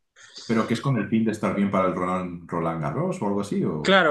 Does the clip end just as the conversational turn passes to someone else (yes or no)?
yes